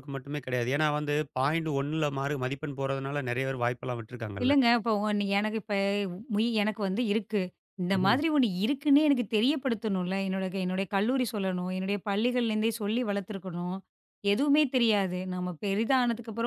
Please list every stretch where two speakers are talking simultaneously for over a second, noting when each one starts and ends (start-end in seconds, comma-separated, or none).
none